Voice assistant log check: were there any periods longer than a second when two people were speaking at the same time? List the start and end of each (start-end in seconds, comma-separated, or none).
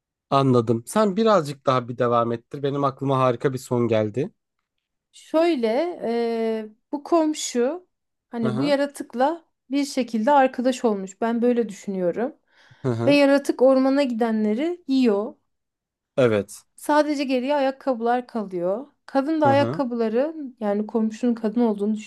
none